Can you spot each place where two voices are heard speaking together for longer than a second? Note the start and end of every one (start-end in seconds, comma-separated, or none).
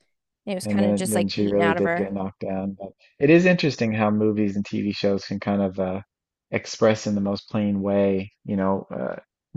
0.6-2.1